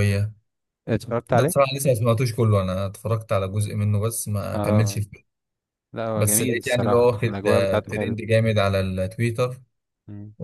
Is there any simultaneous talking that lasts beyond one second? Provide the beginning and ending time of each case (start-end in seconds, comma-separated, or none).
6.2-8.2